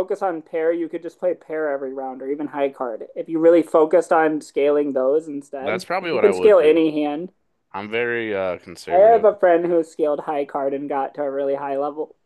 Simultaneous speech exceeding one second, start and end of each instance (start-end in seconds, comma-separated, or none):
5.6-6.9